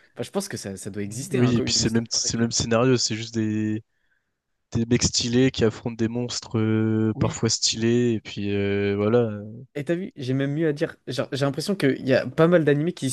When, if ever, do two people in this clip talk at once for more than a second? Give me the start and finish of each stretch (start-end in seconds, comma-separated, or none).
1.1-2.6